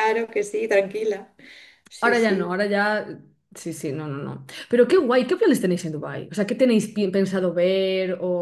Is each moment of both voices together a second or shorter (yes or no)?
yes